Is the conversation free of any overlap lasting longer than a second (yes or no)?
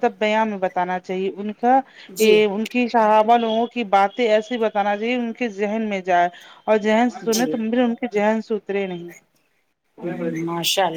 yes